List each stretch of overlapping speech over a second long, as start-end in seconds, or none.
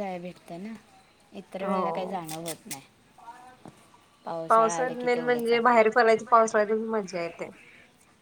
4.5-6.1